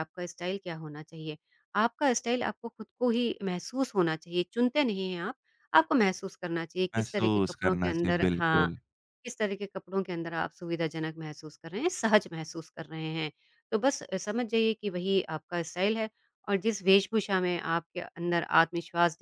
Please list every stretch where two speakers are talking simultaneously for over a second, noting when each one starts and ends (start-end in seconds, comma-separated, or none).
7.0-8.7